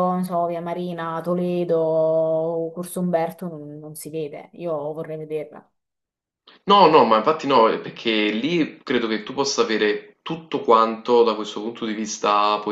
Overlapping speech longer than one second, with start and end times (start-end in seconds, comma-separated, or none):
none